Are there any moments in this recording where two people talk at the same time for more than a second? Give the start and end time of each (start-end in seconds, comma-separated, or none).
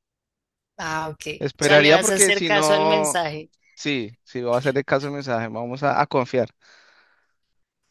1.4-3.2